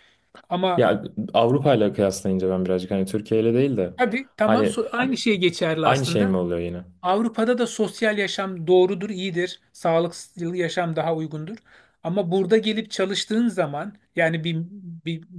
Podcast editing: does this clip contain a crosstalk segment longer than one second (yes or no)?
no